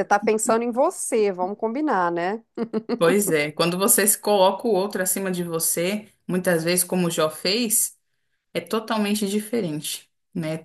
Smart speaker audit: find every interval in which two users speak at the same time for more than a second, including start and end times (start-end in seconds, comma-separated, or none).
none